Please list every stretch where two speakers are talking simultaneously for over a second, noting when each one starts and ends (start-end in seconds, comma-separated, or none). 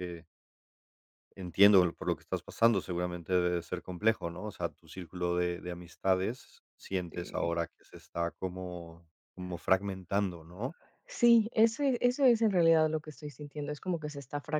none